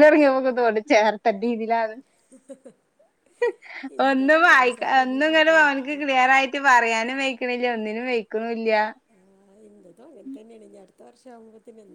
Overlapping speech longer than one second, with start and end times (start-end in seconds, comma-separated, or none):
4.1-6.0